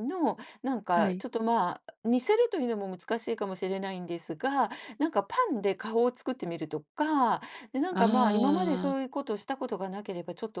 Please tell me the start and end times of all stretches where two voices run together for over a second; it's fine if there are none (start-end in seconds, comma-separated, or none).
7.9-9.1